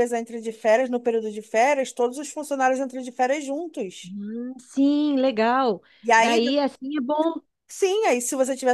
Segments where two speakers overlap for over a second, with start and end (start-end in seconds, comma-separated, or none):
none